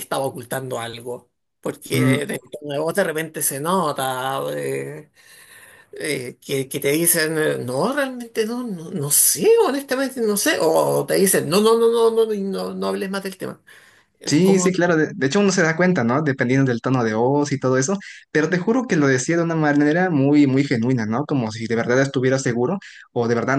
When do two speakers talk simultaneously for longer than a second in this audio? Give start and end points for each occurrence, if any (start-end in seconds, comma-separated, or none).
none